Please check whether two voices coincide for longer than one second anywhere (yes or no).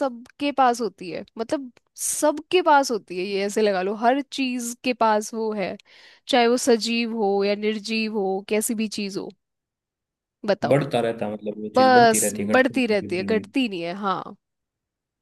yes